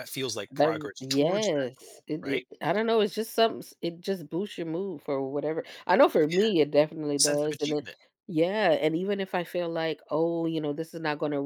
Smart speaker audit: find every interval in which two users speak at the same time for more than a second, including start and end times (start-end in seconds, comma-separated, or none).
0.5-2.4